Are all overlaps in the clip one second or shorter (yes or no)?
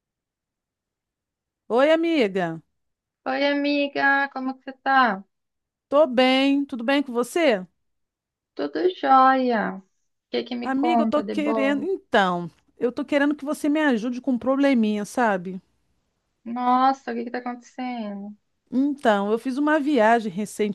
no